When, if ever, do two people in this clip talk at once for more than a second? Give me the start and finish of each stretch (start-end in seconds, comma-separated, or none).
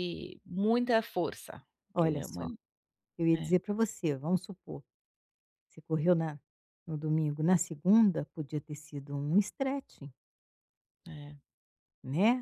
none